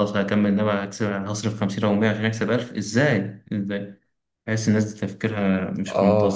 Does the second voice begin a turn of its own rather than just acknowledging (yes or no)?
yes